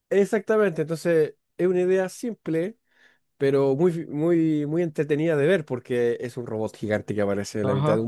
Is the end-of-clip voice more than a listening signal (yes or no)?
yes